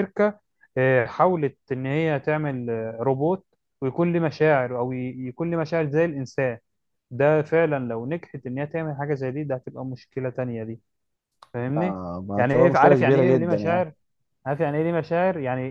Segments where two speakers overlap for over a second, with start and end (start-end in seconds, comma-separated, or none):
11.8-13.9